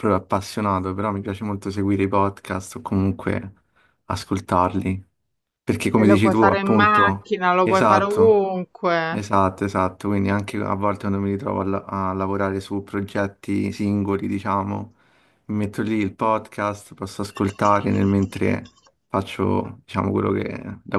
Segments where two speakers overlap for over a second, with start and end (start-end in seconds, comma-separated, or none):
6.0-8.4